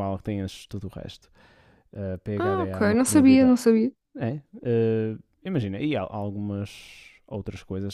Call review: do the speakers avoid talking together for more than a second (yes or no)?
no